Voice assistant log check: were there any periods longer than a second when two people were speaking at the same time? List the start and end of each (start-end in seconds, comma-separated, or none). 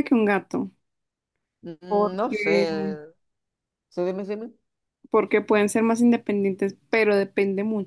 none